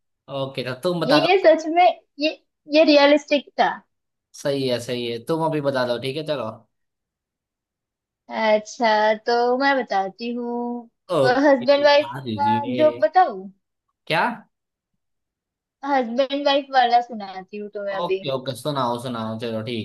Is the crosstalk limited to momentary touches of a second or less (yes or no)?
no